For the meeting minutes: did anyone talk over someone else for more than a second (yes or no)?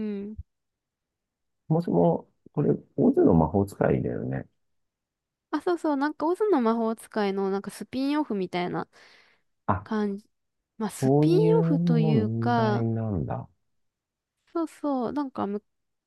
yes